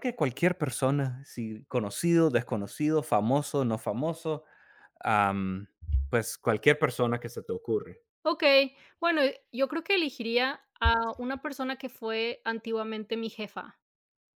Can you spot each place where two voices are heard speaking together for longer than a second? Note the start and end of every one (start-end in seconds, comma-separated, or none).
none